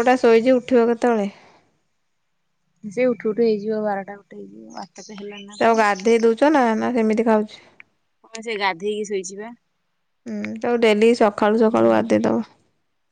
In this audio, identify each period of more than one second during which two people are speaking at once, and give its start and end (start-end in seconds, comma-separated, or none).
none